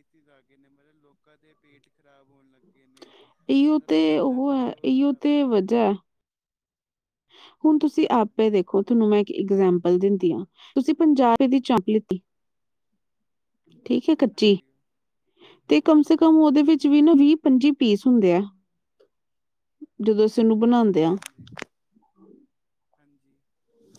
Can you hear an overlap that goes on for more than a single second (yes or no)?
yes